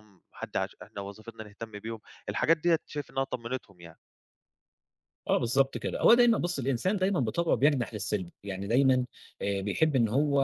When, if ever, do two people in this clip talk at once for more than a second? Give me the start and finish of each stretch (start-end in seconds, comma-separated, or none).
none